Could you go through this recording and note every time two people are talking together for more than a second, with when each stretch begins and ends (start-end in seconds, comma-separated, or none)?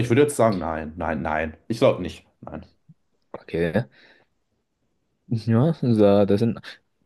none